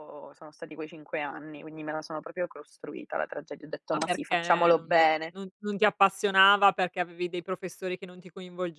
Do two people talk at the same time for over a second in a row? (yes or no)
yes